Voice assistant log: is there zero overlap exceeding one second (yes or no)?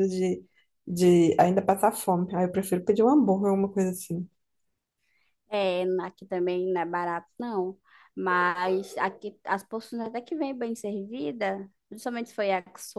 yes